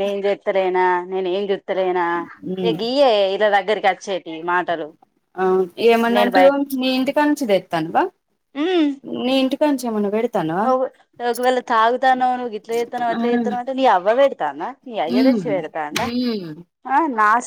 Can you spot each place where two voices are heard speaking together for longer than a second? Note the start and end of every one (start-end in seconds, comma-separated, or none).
none